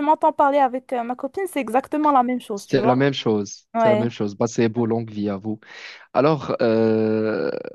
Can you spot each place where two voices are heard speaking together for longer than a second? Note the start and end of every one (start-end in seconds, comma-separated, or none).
none